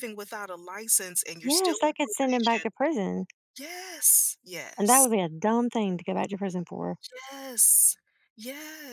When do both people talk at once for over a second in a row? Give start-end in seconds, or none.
1.4-2.7